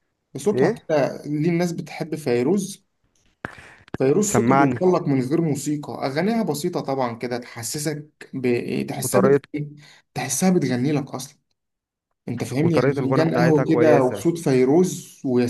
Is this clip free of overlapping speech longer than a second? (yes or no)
no